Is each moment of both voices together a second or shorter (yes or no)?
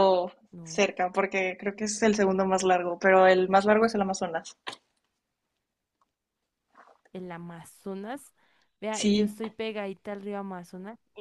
yes